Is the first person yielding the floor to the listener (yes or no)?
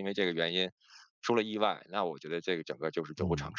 yes